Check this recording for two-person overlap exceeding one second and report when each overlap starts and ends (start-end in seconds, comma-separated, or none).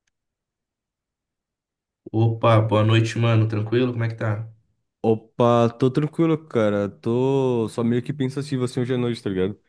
none